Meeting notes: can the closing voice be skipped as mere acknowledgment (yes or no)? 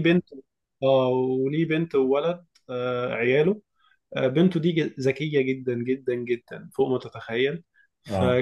yes